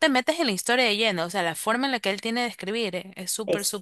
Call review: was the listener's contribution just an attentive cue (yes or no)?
no